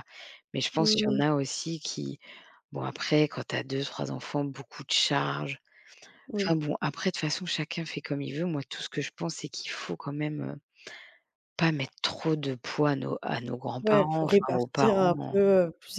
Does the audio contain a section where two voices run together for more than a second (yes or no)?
yes